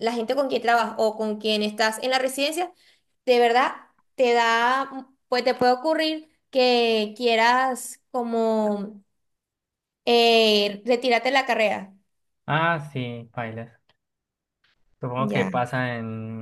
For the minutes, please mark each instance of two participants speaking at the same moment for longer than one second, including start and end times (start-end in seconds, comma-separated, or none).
none